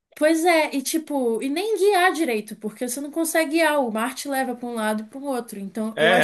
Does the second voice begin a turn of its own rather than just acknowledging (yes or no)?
yes